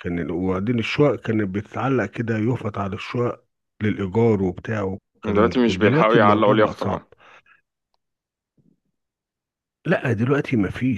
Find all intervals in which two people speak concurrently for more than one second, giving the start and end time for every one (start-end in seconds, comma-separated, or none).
5.2-7.1